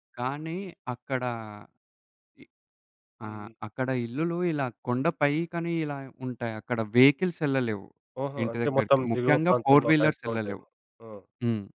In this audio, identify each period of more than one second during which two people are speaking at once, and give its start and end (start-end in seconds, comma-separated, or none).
8.4-10.6